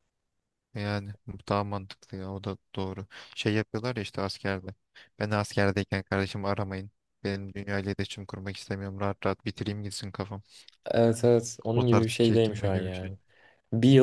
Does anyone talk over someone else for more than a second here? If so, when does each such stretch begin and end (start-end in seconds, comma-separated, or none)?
11.8-13.1